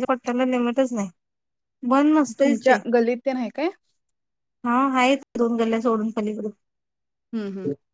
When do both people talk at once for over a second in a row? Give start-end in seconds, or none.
none